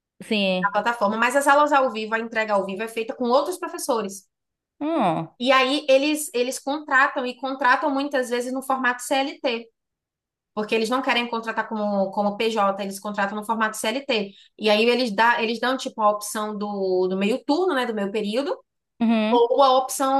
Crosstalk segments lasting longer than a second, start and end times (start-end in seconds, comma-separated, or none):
none